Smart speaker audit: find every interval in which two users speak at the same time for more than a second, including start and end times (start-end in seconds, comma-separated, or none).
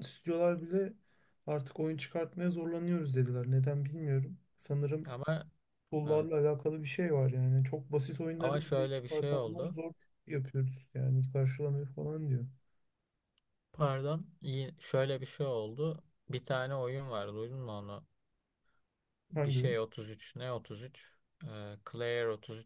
8.4-9.8